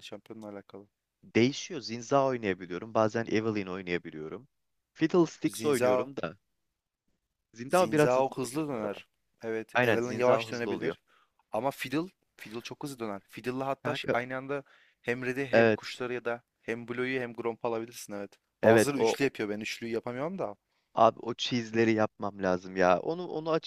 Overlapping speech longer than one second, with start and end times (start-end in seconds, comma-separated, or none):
7.7-9.0, 9.7-10.9